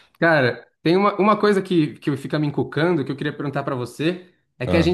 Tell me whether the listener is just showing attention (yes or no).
yes